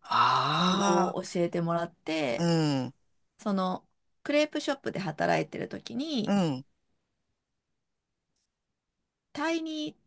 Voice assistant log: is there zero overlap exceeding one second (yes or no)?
yes